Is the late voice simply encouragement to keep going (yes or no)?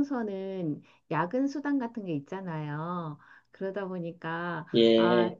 yes